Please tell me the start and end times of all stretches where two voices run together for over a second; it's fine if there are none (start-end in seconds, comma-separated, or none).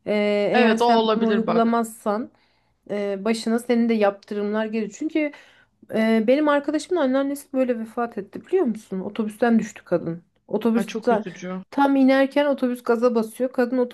0.5-1.8